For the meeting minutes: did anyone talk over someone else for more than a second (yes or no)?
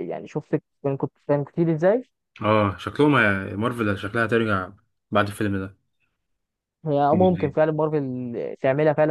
no